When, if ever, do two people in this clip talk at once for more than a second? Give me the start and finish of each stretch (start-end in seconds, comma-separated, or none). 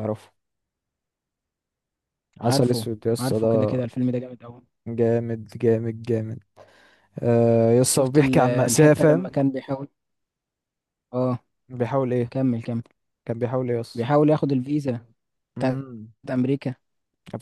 2.4-3.8, 7.9-9.3